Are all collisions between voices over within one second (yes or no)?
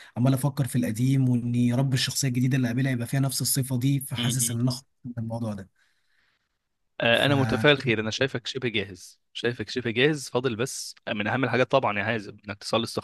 yes